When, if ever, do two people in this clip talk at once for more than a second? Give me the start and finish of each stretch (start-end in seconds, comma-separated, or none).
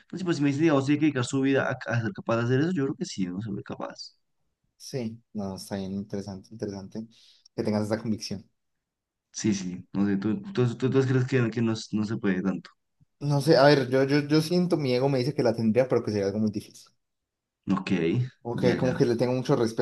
none